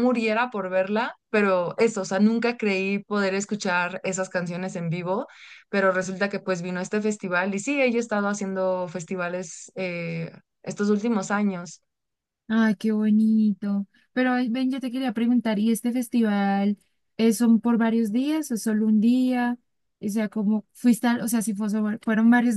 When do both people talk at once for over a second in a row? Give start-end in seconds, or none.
none